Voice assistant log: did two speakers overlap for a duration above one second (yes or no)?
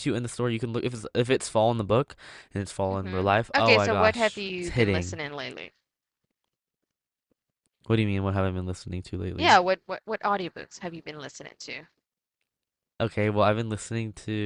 yes